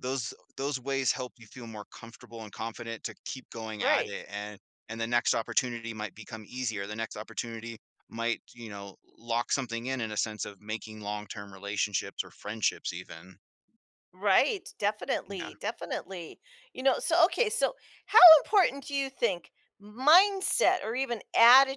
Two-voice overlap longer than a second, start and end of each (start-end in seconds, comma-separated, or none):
none